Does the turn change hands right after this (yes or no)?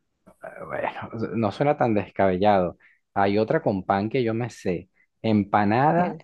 no